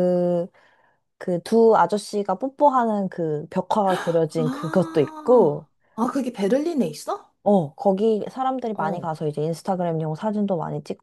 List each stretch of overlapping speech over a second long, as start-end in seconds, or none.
4.4-5.7